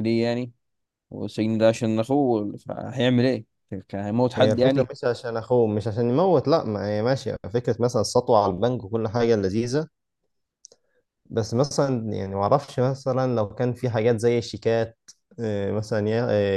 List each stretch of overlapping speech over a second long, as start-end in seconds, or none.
none